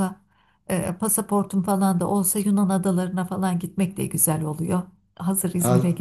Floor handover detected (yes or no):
yes